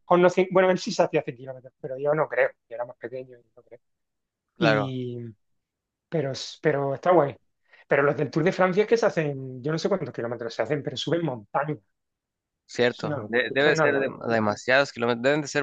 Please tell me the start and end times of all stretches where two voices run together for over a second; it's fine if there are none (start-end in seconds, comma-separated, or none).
12.9-14.6